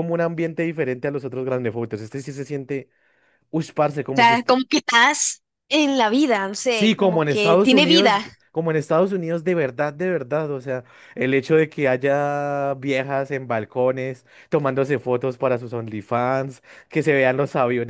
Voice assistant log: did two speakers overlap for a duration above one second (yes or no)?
yes